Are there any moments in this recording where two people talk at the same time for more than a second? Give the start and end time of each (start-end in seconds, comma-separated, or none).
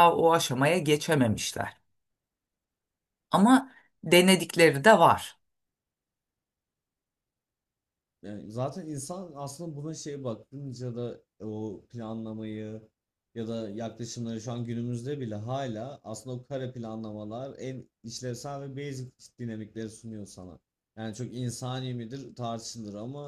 none